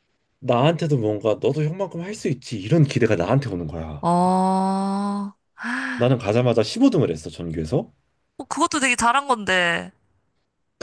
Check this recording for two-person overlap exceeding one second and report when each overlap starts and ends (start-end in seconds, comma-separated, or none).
none